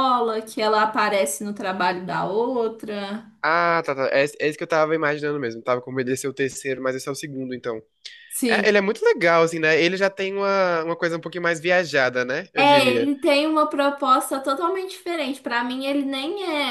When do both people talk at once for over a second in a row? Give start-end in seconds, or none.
none